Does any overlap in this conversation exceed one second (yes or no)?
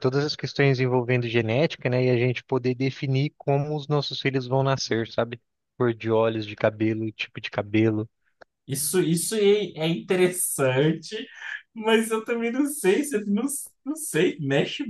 no